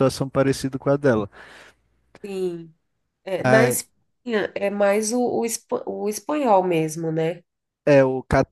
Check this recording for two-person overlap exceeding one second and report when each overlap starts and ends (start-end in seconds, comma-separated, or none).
none